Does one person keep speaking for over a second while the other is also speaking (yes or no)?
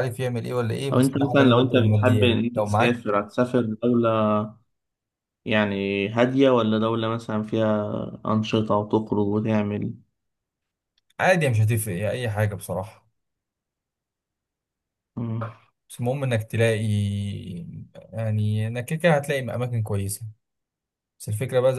yes